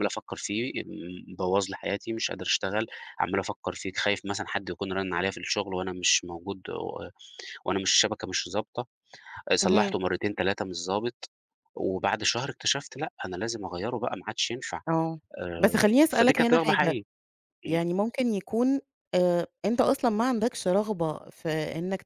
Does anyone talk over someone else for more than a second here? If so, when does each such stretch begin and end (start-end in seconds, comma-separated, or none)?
15.6-16.9